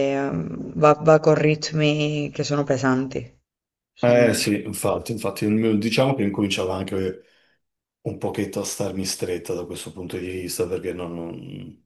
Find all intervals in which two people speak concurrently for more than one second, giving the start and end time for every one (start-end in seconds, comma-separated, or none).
none